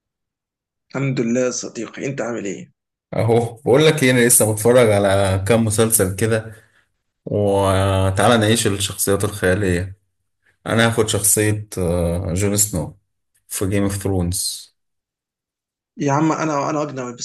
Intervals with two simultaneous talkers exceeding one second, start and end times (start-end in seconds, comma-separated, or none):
none